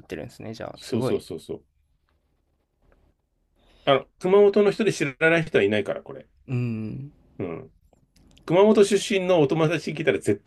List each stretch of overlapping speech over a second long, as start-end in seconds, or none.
none